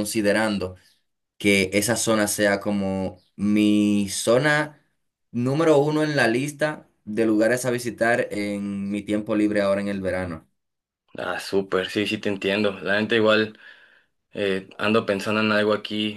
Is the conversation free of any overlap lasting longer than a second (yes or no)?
yes